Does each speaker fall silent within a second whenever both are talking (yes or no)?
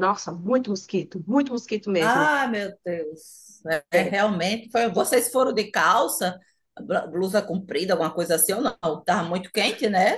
yes